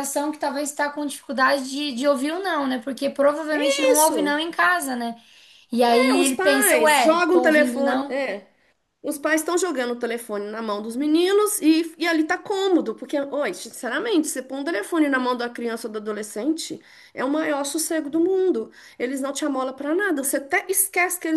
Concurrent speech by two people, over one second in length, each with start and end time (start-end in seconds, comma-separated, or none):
5.8-8.2